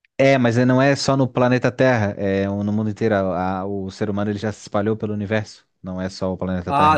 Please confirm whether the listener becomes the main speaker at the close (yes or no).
yes